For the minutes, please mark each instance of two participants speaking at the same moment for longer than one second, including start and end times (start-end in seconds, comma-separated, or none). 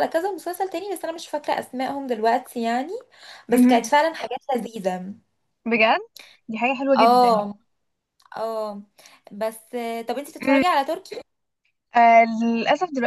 none